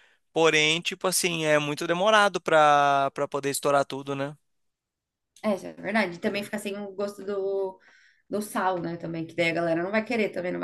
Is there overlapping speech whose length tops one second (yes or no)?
no